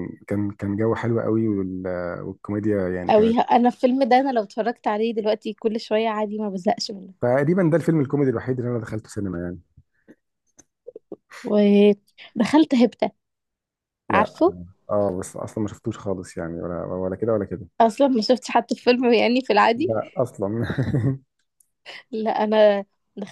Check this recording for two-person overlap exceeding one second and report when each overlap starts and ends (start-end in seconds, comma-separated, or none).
none